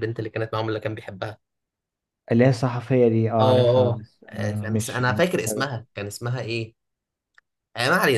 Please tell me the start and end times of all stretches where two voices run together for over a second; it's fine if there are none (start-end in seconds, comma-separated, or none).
3.4-5.6